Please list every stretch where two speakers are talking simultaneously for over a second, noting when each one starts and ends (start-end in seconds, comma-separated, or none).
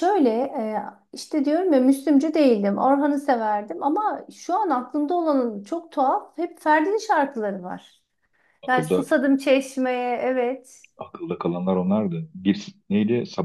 none